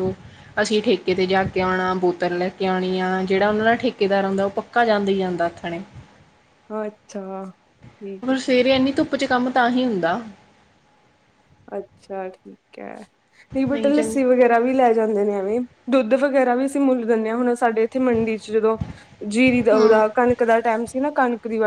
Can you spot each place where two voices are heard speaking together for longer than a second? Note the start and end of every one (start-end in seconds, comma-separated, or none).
none